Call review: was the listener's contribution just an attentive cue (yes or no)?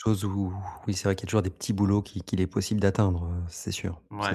no